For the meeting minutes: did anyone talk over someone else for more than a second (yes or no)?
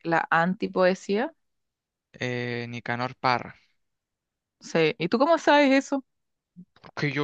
no